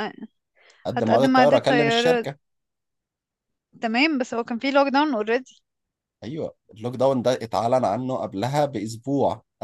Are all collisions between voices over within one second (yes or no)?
no